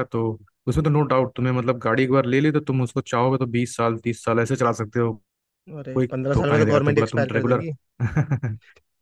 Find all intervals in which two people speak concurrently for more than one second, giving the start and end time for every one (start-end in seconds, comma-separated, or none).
5.9-7.6